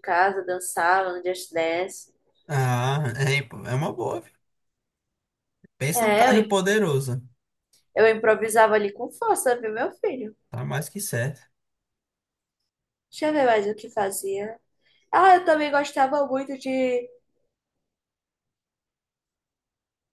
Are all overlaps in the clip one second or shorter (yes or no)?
yes